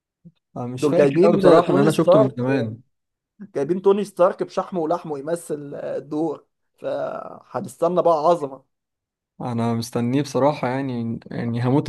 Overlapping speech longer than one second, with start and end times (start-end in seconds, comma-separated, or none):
0.8-2.4